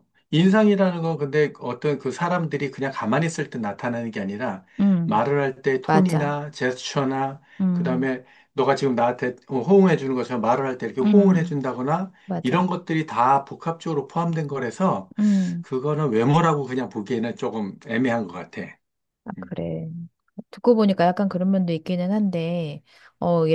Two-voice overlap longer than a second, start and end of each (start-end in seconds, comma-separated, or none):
none